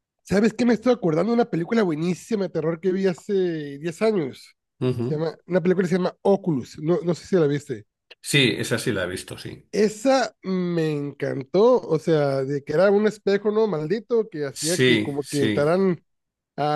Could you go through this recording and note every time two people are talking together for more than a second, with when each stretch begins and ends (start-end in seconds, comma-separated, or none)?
14.5-15.8